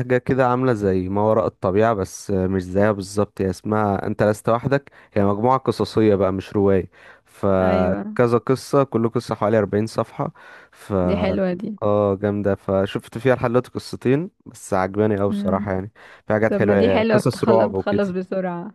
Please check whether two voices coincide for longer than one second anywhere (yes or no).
yes